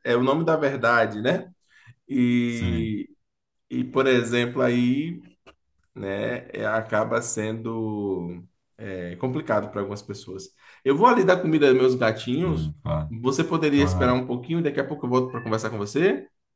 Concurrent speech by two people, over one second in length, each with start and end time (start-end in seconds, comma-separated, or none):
none